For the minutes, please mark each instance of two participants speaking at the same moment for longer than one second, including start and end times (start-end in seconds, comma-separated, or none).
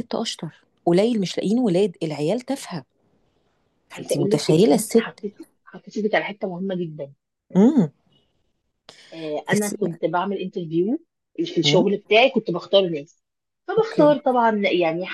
3.9-5.2